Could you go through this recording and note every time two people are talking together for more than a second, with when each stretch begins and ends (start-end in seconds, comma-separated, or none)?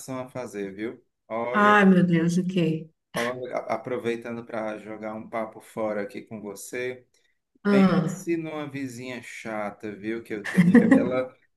none